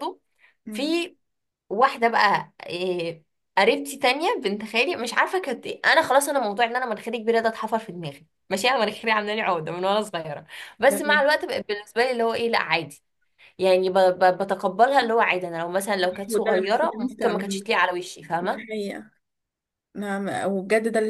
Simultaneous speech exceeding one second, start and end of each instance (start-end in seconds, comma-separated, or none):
16.3-17.7